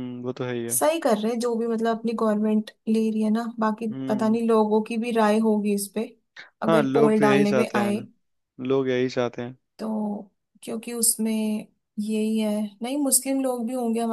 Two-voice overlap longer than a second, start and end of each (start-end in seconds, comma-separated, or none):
6.7-8.0